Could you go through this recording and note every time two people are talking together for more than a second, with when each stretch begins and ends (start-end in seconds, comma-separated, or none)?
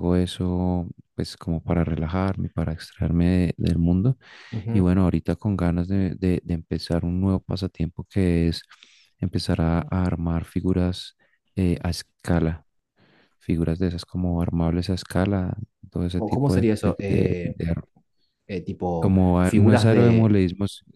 16.1-17.6, 19.0-20.3